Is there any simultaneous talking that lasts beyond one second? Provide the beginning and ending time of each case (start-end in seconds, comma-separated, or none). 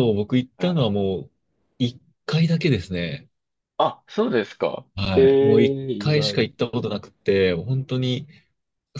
5.0-6.5